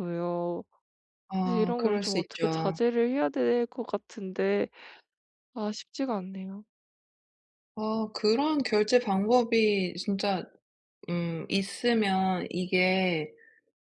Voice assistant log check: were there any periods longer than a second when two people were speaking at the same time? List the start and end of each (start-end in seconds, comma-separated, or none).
1.4-2.8